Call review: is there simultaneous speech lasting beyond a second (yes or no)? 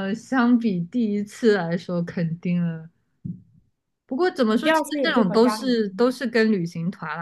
yes